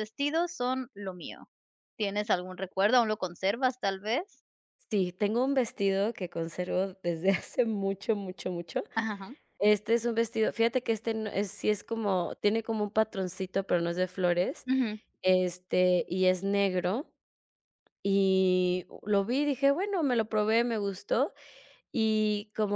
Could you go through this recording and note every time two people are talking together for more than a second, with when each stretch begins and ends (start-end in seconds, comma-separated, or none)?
none